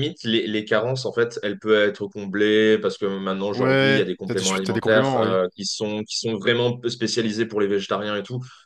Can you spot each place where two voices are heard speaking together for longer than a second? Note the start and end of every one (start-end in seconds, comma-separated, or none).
3.5-5.4